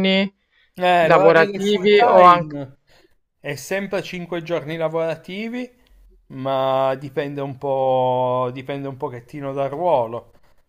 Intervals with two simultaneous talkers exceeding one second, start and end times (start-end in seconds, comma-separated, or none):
1.0-2.6